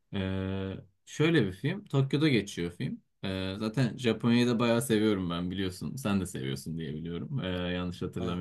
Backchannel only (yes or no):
yes